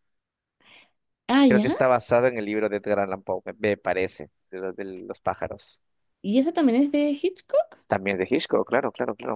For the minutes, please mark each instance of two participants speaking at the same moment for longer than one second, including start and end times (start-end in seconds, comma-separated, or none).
none